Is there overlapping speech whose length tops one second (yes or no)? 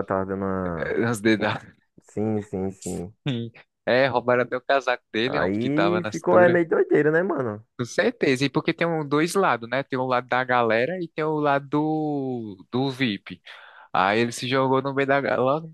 yes